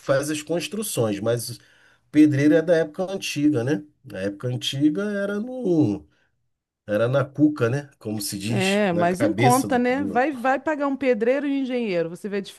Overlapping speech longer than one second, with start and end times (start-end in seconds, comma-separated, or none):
8.5-10.2